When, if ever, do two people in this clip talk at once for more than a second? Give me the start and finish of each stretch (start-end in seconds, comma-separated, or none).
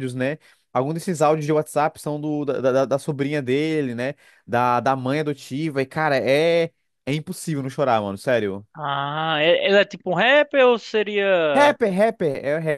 none